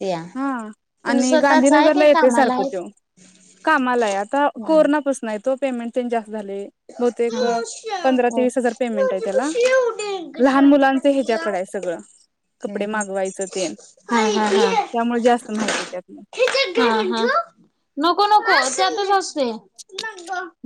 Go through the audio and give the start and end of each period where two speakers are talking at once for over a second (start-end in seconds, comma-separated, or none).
1.1-2.8